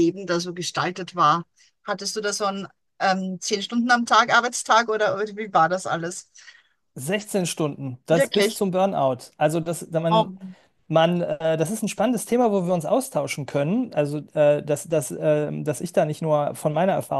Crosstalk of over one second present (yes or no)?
no